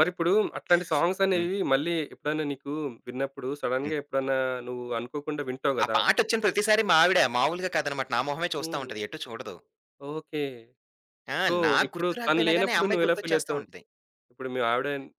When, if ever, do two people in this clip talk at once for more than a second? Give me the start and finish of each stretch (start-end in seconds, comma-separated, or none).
11.5-13.6